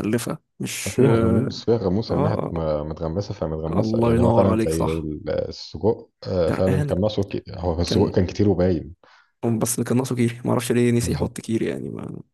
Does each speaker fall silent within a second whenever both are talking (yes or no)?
no